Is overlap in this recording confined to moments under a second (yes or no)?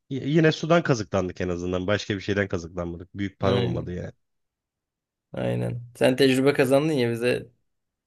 yes